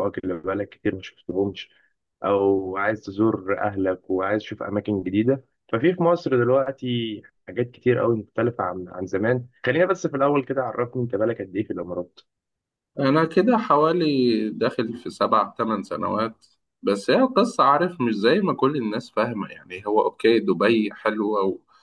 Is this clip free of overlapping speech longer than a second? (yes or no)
yes